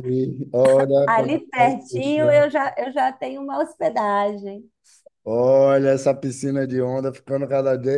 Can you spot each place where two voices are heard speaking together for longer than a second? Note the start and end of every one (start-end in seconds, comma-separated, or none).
1.1-2.5